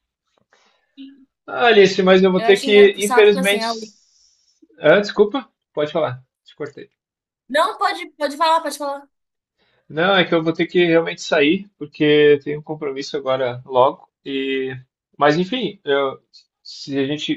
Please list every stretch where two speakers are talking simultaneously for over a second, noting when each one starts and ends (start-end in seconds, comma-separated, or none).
2.4-3.7